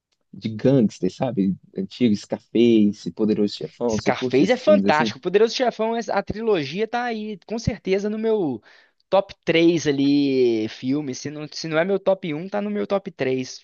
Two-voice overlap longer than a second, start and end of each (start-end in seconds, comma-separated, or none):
3.9-5.2